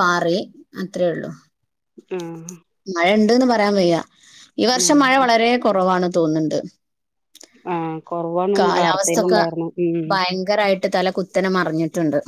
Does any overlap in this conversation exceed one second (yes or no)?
no